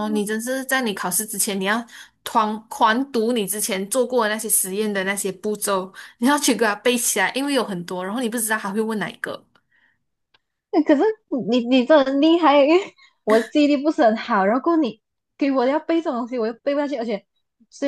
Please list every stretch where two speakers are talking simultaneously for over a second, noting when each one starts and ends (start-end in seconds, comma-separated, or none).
none